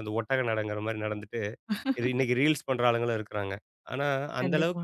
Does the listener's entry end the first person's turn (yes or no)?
no